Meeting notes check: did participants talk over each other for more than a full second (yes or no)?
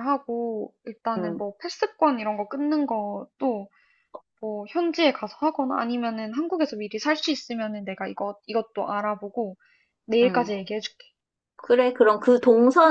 no